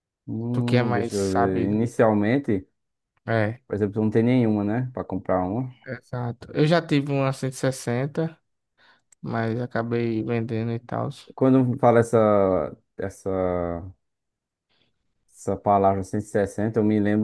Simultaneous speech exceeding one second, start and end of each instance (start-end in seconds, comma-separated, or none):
0.5-1.8